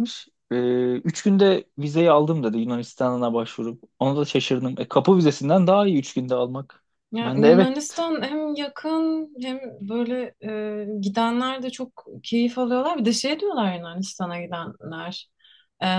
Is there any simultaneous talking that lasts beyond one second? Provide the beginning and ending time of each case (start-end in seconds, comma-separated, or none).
none